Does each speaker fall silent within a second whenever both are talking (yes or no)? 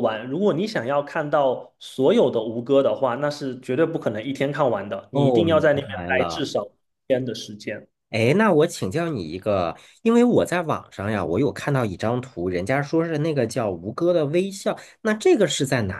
no